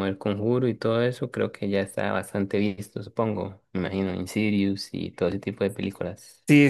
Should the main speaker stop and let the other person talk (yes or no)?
yes